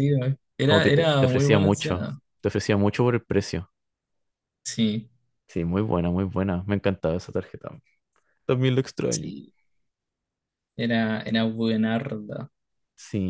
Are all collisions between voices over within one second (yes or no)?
no